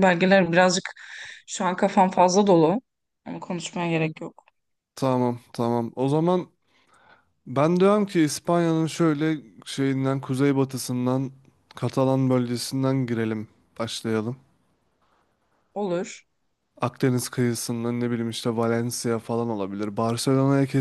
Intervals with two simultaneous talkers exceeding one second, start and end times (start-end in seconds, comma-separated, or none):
none